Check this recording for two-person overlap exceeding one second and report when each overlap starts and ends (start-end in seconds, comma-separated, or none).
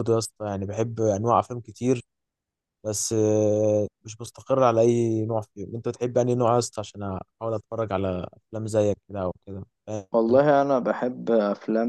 none